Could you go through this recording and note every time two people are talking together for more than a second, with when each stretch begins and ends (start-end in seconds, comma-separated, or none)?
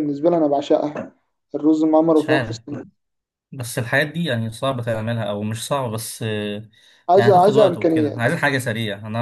7.2-8.4